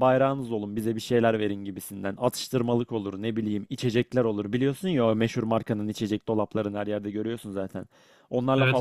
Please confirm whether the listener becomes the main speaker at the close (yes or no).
no